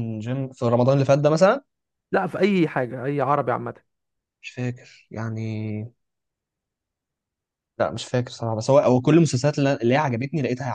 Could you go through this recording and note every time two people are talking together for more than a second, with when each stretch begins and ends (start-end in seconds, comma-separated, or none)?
none